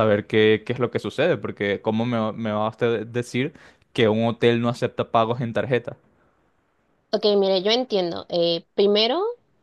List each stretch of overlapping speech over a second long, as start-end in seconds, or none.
none